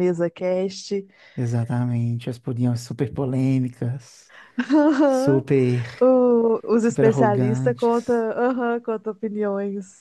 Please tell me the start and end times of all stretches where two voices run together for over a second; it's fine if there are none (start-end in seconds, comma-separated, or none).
6.8-8.3